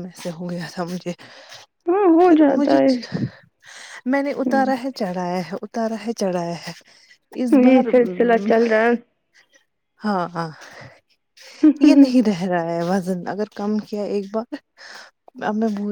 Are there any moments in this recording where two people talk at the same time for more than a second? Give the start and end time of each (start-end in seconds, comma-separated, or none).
none